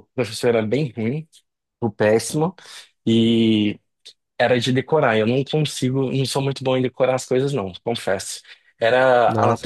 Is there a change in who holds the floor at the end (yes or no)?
yes